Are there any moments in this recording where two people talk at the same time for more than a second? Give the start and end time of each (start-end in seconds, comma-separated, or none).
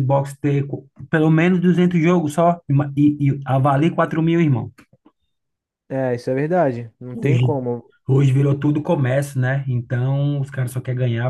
none